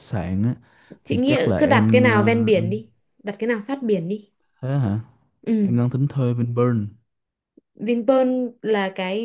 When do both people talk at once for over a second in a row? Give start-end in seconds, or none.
1.1-2.8